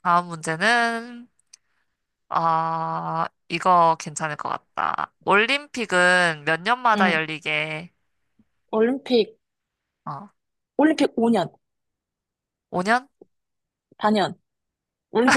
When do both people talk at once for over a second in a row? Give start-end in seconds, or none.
none